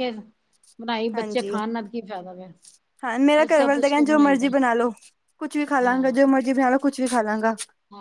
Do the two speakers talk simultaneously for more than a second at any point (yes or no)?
no